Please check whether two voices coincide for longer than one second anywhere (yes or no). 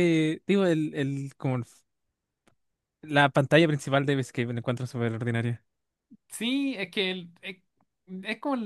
no